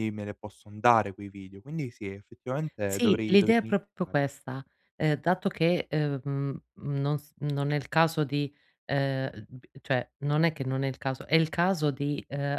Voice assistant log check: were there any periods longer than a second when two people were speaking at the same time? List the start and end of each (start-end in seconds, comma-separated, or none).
2.9-4.1